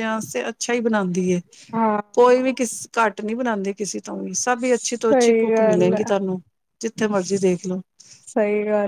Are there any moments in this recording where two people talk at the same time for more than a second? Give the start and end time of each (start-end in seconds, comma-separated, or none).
4.7-6.0